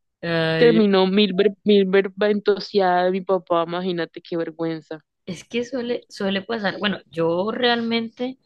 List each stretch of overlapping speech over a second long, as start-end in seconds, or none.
none